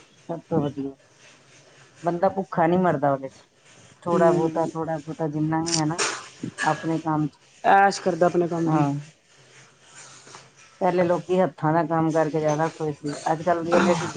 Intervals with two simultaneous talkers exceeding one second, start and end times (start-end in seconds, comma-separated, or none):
none